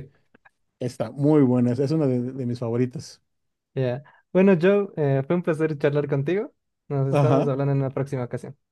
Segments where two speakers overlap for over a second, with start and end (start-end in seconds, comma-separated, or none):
none